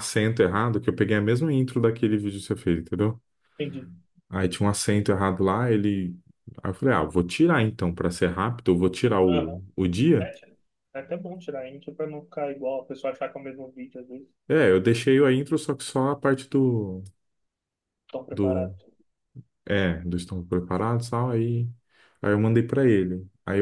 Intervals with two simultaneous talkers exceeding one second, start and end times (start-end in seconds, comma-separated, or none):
none